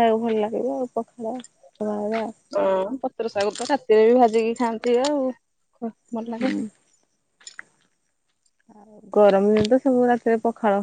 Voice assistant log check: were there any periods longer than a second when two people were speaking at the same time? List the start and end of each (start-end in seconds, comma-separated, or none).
none